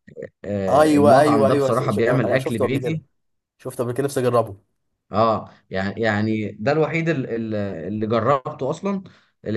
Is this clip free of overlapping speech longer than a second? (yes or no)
no